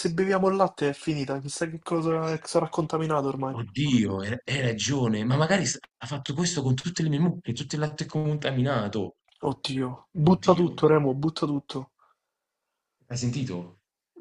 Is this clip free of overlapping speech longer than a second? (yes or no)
yes